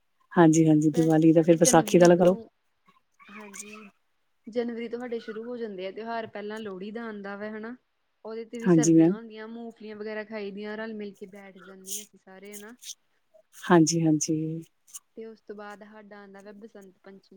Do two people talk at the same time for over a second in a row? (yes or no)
yes